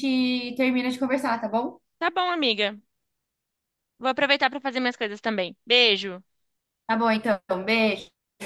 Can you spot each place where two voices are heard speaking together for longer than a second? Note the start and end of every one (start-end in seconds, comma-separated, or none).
none